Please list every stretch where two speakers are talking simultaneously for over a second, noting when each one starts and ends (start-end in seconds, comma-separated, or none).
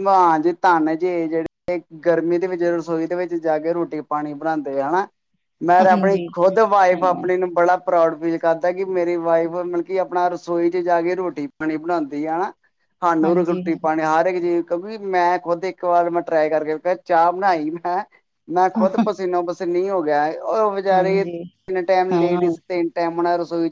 none